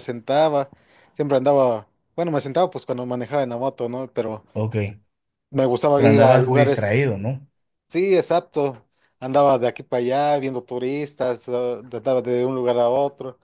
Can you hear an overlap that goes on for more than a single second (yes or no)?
yes